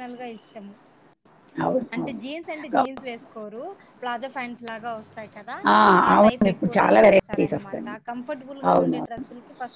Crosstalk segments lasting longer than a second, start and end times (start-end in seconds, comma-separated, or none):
6.2-7.8